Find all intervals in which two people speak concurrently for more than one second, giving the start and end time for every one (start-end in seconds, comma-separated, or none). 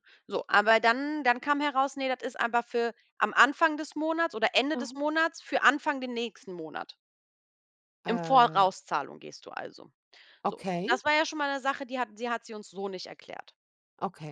none